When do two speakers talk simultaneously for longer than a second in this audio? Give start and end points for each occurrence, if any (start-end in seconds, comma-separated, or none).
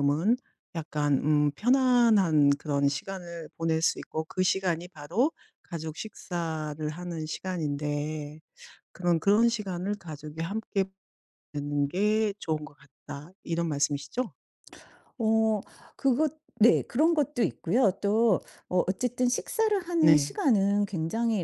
none